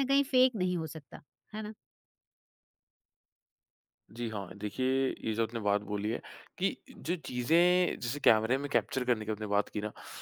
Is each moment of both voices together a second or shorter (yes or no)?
yes